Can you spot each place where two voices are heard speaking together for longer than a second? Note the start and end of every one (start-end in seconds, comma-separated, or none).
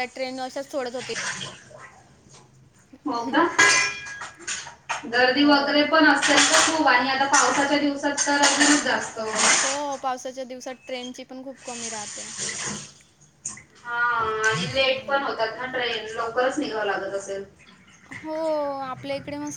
none